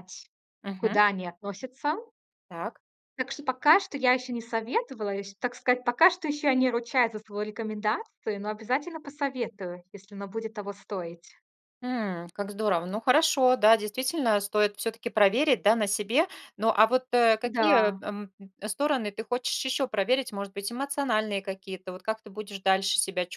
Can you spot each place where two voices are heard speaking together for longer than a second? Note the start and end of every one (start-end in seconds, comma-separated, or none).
none